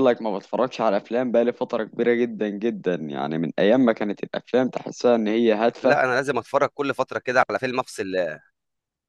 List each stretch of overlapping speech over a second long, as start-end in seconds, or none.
none